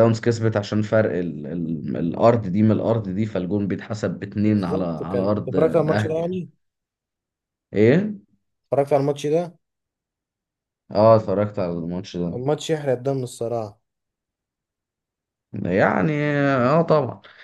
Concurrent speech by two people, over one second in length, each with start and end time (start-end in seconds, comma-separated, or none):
4.4-6.4